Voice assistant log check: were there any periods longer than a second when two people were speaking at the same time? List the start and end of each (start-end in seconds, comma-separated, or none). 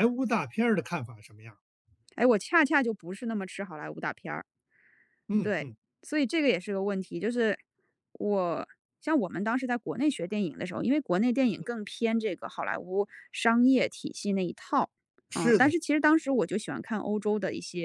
none